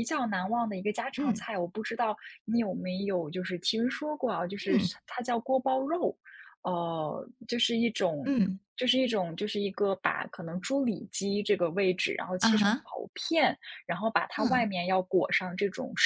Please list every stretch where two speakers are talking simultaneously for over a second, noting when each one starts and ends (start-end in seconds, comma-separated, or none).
none